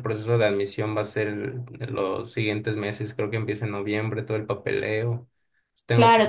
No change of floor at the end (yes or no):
no